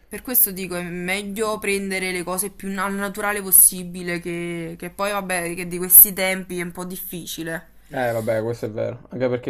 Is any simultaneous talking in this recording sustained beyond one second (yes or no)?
no